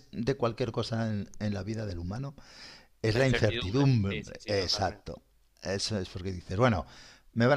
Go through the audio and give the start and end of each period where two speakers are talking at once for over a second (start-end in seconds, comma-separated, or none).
3.1-5.0